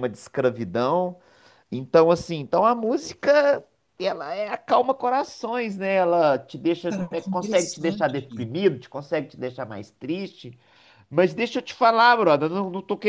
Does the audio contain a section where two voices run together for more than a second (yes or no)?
yes